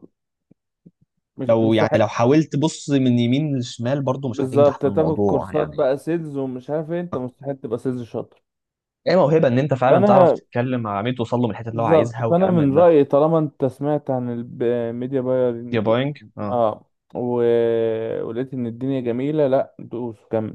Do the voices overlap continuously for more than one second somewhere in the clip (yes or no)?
yes